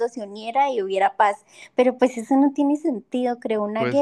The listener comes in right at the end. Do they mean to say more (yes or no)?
no